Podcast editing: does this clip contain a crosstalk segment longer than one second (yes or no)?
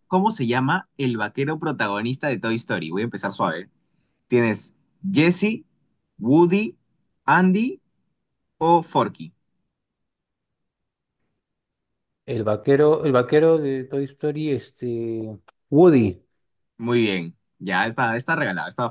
no